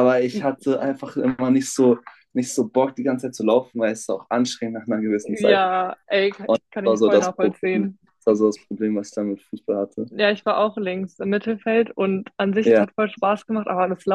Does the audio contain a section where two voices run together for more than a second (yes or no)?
yes